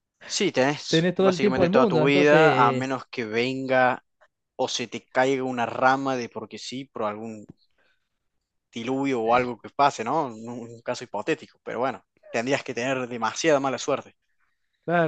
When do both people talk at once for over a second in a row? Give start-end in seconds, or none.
0.9-2.9